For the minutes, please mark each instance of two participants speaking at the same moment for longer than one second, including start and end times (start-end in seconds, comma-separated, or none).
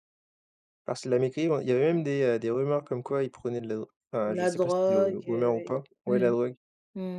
4.2-6.3